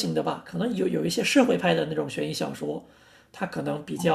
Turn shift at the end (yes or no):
no